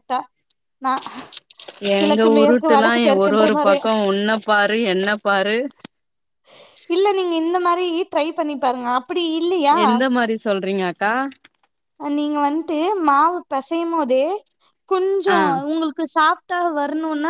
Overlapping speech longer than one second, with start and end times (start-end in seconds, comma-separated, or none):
2.0-3.8